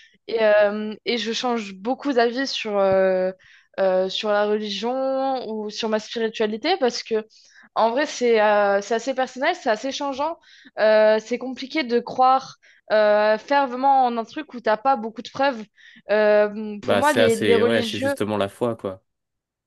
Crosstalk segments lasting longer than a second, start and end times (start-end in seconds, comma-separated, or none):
16.8-18.1